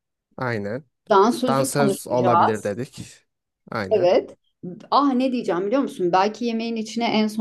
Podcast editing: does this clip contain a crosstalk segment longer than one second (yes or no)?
yes